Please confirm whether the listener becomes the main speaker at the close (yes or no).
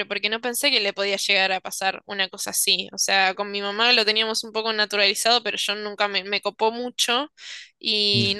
no